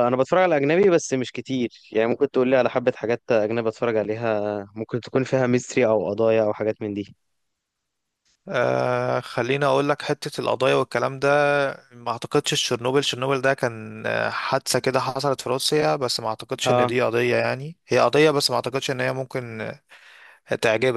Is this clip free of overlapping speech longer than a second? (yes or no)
yes